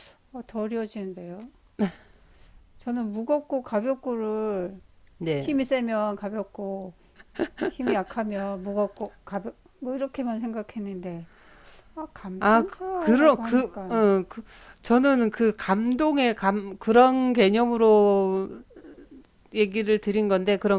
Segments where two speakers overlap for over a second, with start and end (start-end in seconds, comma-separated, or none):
12.4-14.0